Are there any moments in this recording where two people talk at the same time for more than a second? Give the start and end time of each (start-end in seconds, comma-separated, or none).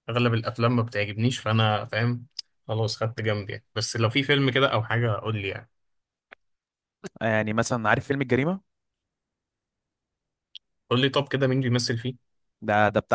none